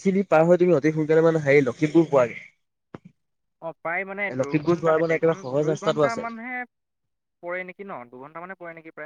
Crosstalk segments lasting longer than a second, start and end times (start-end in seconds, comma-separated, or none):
4.4-6.2